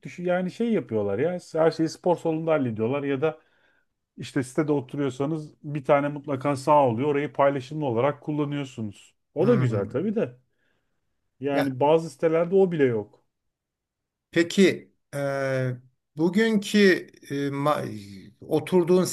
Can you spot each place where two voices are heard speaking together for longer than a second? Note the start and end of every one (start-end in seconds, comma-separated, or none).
none